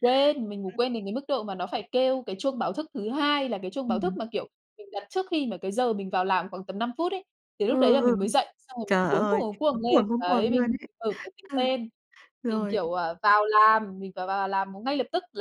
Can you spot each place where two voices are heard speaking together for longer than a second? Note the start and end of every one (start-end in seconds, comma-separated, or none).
8.8-10.9